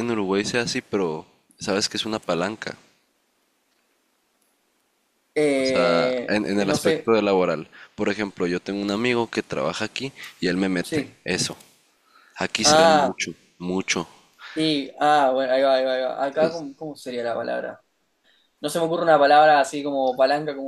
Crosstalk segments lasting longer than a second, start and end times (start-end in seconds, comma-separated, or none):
5.5-7.1